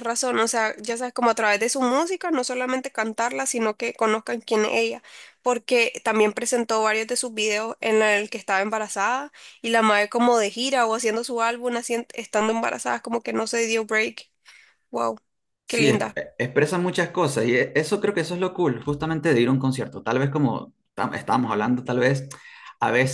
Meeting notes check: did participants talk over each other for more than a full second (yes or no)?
no